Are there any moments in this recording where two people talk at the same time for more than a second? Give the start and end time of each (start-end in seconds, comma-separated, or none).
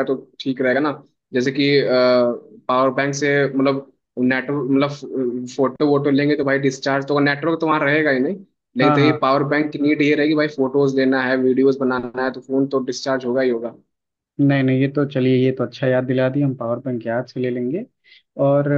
none